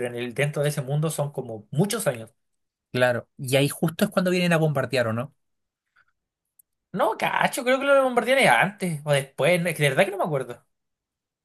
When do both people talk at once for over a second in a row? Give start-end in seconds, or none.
none